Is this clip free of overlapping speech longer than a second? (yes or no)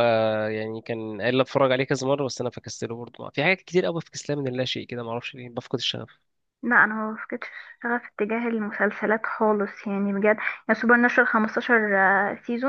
yes